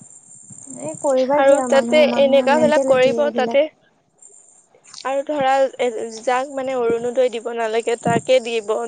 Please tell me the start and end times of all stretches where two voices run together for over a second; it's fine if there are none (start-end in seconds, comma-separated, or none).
1.4-3.6